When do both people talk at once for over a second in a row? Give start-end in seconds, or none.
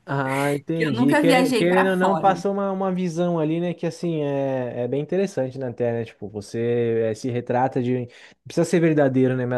0.7-2.4